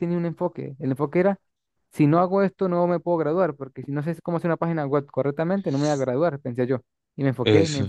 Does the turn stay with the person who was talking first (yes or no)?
yes